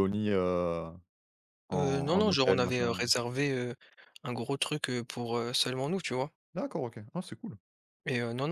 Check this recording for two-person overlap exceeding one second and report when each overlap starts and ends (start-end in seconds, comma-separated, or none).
1.7-3.2